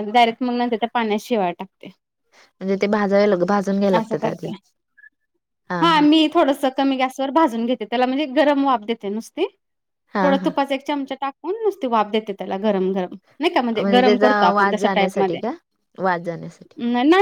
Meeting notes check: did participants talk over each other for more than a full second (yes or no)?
yes